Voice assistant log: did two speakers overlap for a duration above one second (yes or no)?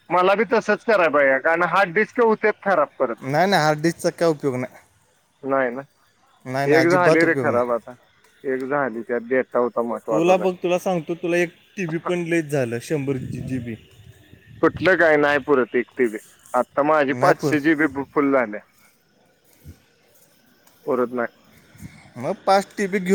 no